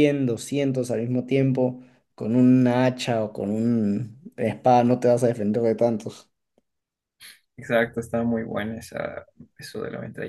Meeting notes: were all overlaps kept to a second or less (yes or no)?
yes